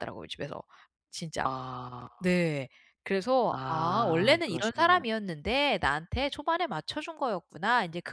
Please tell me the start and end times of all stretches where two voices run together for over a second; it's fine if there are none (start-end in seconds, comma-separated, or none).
3.5-5.0